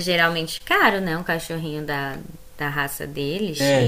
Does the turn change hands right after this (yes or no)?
yes